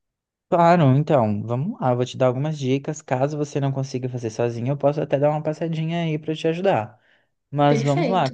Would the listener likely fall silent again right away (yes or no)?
yes